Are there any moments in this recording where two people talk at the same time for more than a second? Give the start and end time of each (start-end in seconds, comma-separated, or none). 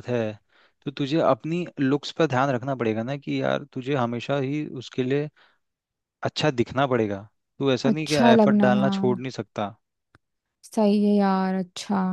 7.9-9.2